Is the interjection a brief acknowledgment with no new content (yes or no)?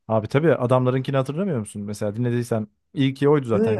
no